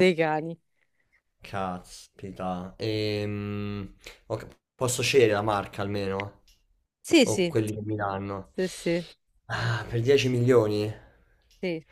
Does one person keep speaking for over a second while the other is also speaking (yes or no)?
no